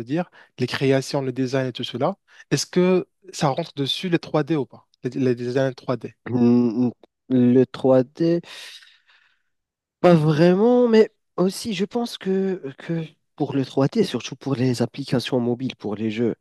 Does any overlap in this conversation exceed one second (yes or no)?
no